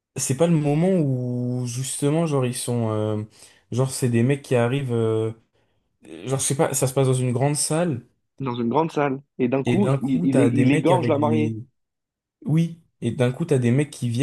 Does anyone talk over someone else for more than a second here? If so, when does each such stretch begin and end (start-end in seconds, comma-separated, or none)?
9.6-11.6